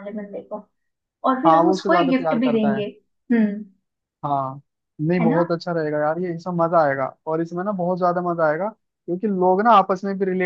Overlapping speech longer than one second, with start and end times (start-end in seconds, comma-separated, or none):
1.5-2.8